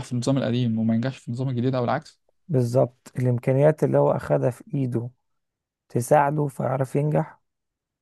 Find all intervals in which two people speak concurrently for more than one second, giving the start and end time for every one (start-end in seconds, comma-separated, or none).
none